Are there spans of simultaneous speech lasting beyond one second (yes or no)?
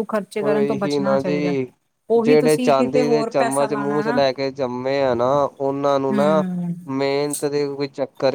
yes